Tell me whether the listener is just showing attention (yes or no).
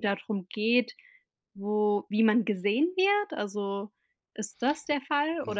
no